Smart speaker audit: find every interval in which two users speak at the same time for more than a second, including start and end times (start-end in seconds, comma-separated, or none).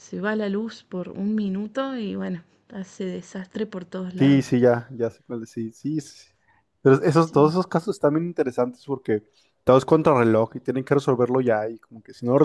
none